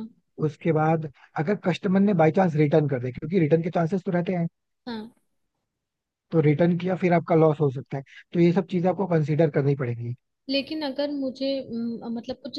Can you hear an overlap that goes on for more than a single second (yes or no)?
no